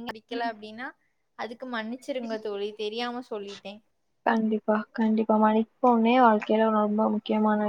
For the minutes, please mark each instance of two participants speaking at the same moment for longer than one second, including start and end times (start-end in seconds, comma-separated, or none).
none